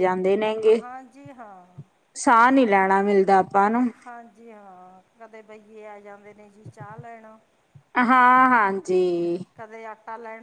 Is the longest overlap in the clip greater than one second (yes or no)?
no